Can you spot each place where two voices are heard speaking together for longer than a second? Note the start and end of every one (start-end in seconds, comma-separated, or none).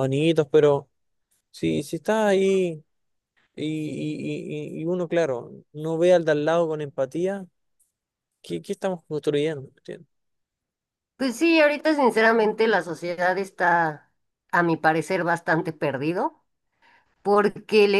none